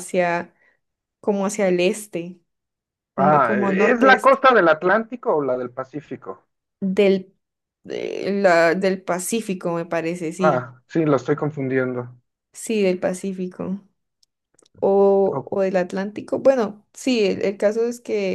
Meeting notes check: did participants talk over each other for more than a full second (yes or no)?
yes